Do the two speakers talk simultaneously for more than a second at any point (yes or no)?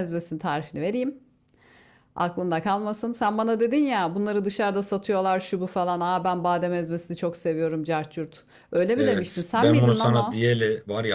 yes